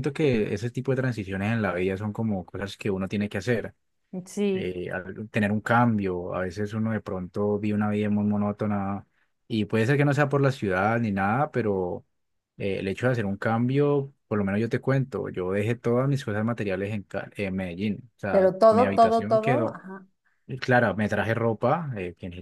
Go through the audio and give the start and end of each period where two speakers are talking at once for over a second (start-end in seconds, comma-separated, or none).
18.3-19.8